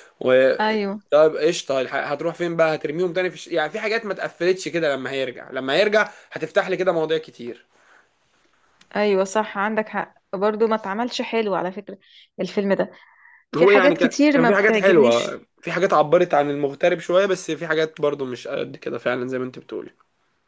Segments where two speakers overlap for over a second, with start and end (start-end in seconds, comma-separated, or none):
13.6-15.4